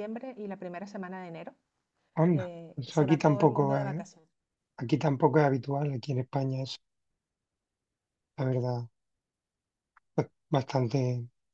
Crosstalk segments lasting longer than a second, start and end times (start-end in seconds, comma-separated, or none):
2.3-4.0